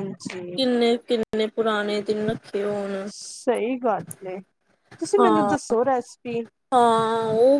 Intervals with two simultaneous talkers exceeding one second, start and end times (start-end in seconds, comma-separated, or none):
none